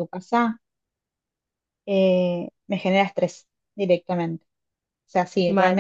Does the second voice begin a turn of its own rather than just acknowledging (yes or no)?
no